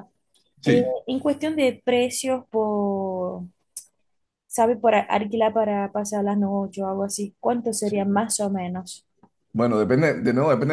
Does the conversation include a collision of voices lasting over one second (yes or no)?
no